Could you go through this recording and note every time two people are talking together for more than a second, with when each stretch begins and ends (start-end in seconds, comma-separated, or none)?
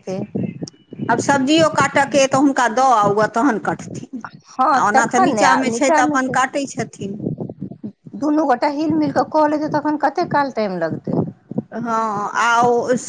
4.5-6.4